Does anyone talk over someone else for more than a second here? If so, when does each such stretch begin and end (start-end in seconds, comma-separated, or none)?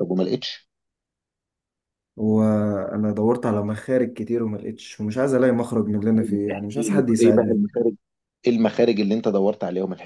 6.1-7.6